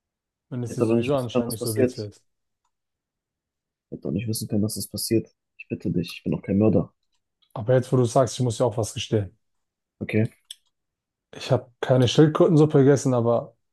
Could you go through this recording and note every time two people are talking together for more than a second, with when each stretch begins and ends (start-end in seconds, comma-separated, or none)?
0.6-2.1